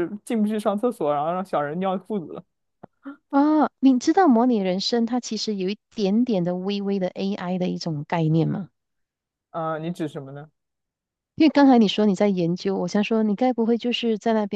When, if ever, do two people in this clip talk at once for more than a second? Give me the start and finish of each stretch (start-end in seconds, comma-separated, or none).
none